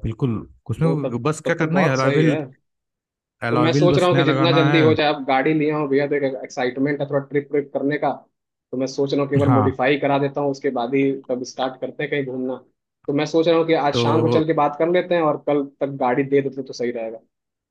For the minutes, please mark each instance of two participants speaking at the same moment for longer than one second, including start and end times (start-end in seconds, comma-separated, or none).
0.8-2.4, 3.5-4.8